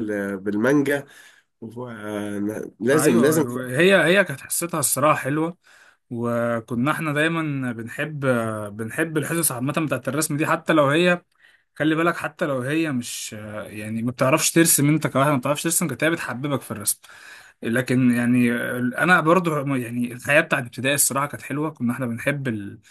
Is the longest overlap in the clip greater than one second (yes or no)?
no